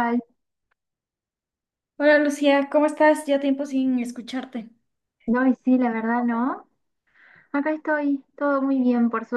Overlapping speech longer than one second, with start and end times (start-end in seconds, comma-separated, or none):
none